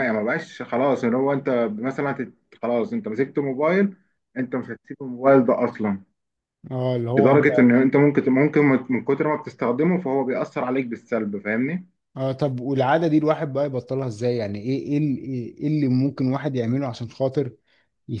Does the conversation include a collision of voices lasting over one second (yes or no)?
no